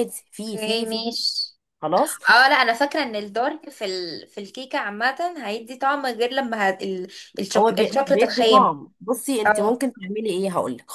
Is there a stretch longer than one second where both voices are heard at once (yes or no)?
yes